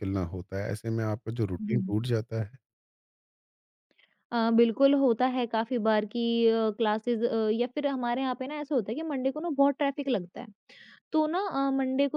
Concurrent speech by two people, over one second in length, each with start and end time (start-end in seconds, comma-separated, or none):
none